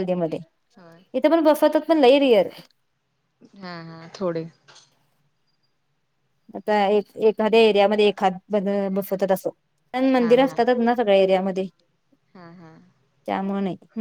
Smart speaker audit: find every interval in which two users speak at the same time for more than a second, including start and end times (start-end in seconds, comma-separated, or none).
none